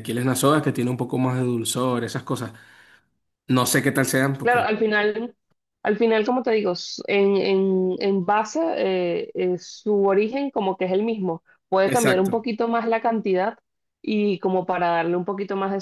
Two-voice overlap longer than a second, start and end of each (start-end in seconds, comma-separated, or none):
none